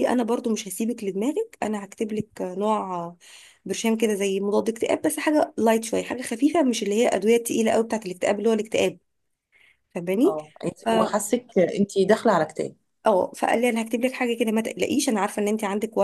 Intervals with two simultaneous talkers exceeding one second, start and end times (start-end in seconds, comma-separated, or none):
none